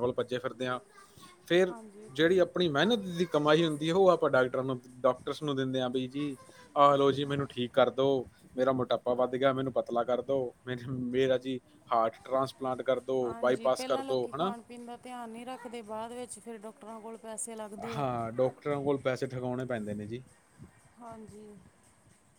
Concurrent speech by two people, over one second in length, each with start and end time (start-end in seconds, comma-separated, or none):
none